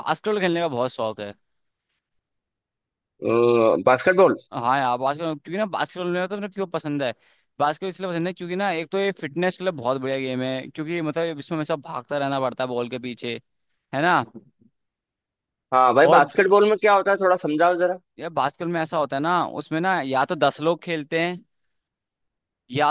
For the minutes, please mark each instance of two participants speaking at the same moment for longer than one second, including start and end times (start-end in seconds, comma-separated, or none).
none